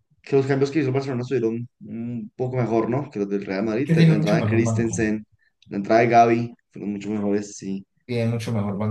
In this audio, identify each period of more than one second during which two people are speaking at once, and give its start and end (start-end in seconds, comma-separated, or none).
3.8-5.0